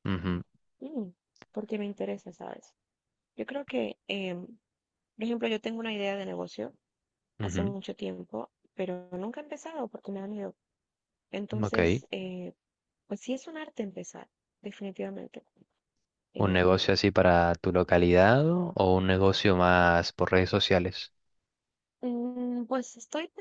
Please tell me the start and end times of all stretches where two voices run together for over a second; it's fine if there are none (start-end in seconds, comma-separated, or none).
none